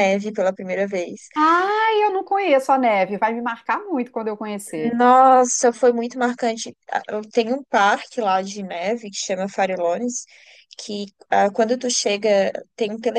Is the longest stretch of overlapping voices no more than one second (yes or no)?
yes